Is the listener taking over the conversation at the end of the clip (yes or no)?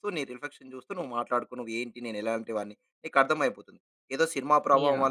no